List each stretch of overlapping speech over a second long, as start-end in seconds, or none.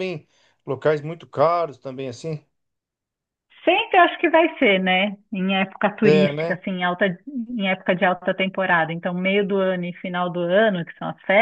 none